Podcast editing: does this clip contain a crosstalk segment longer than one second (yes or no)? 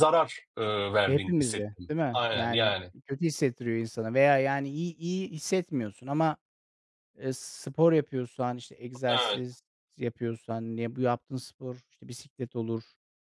yes